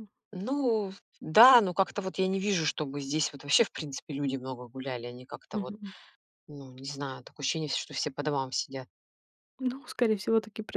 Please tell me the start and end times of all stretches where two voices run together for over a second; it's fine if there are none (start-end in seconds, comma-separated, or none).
none